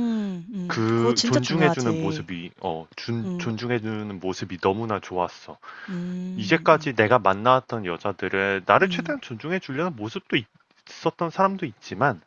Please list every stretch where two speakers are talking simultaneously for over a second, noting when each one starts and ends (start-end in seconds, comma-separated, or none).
0.7-2.3